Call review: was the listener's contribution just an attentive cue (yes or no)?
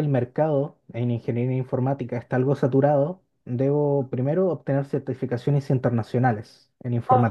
yes